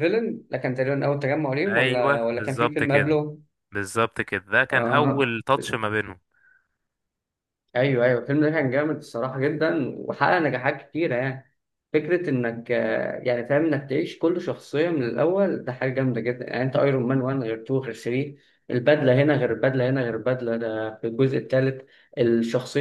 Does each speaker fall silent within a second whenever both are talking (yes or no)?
no